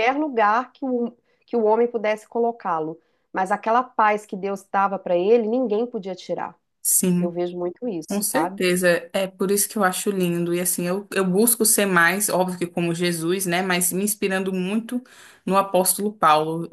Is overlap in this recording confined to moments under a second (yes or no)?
yes